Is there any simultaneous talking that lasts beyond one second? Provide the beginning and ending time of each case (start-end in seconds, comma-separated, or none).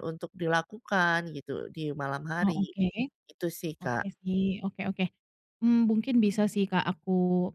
none